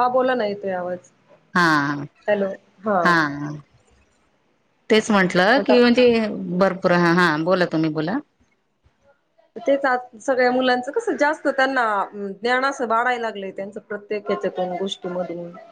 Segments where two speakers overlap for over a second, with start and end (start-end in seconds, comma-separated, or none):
none